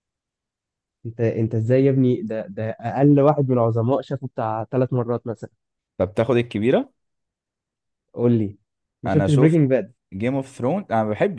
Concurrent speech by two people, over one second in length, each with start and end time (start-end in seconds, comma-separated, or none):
none